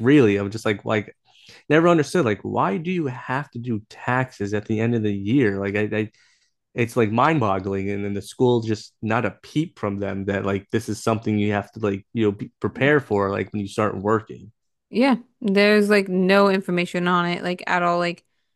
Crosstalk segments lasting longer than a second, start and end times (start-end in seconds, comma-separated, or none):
none